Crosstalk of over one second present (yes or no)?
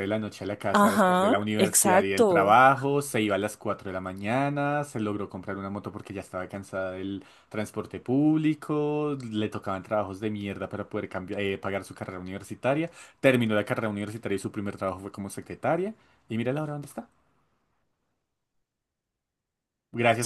yes